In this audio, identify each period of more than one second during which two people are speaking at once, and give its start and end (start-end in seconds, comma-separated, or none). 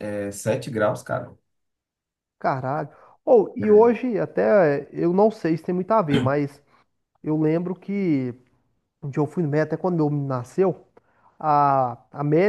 none